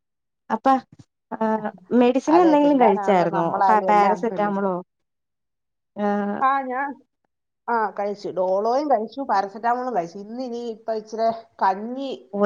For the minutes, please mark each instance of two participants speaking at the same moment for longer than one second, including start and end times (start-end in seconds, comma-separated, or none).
2.4-4.5